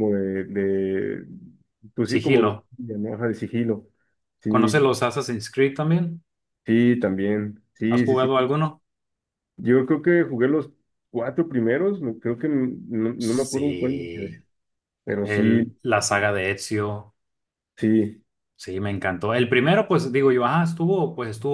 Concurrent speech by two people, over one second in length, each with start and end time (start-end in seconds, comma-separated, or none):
13.2-14.4